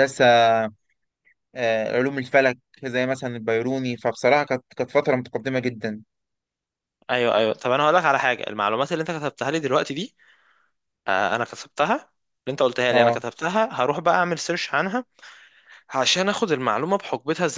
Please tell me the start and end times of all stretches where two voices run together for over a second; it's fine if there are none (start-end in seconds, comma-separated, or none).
none